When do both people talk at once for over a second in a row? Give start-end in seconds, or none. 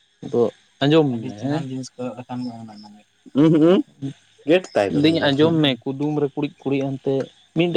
none